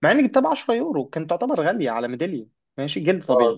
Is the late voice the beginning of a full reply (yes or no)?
no